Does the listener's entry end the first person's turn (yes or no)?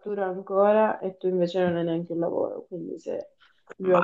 no